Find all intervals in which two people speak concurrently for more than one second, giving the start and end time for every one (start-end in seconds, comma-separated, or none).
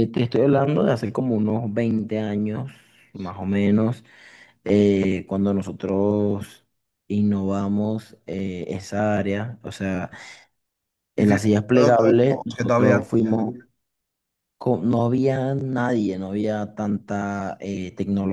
11.2-13.0